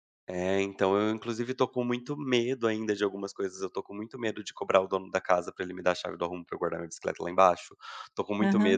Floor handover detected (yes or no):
no